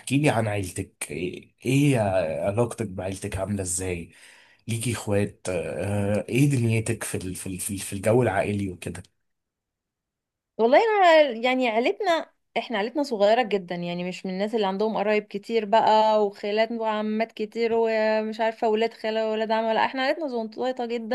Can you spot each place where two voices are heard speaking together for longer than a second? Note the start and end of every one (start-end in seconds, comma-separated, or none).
none